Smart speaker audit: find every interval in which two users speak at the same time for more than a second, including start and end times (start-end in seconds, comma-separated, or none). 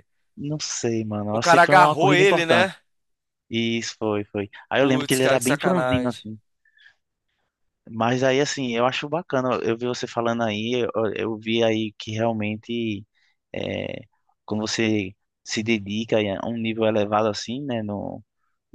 1.3-2.7, 4.8-6.2